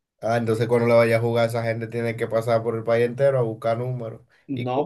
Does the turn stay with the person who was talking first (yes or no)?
no